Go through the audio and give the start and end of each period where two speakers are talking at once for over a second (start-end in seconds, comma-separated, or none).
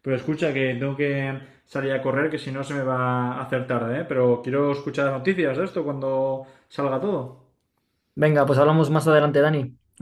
none